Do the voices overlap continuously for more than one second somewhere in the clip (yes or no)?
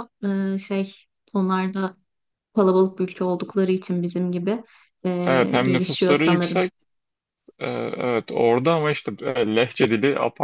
yes